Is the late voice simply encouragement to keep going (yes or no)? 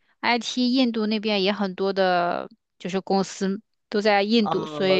no